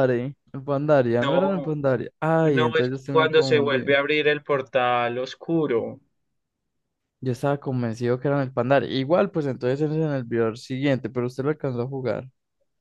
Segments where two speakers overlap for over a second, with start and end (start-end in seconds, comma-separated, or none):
2.4-4.0